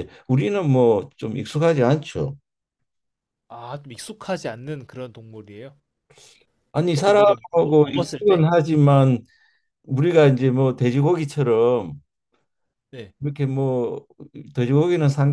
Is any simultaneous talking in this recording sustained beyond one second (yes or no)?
yes